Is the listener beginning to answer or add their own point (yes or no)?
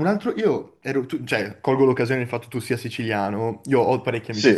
no